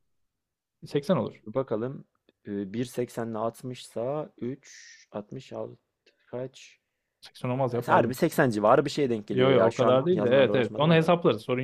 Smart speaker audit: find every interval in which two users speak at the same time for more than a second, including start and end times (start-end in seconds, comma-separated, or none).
9.3-11.1